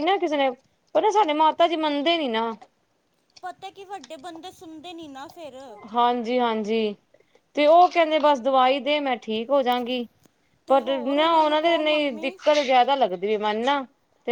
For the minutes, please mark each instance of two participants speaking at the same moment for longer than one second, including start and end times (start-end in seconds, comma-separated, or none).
10.7-12.3